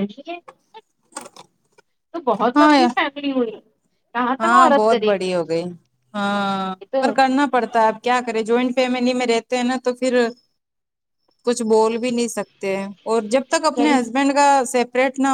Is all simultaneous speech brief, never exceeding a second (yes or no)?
yes